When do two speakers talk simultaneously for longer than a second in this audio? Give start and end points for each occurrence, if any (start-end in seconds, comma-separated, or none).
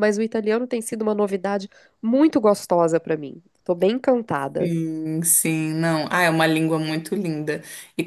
none